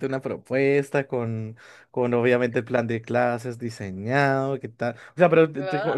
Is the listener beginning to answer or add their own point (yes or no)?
no